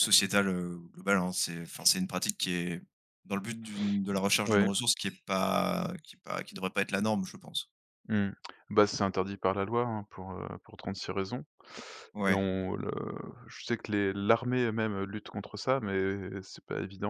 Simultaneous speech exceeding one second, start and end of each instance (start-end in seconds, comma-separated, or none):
none